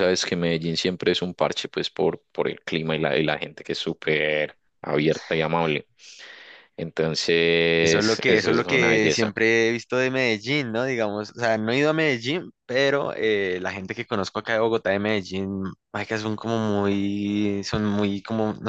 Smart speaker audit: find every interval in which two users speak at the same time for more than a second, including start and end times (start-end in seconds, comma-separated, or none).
7.8-9.3